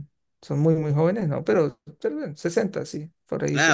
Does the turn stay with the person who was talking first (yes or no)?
no